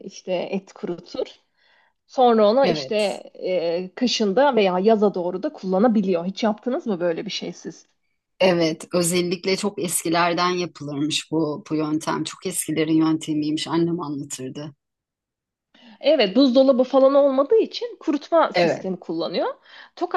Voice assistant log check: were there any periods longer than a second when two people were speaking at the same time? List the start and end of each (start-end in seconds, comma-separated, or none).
none